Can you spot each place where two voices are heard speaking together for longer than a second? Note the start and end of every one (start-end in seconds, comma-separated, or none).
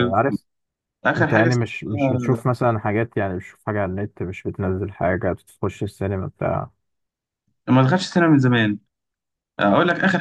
1.1-2.4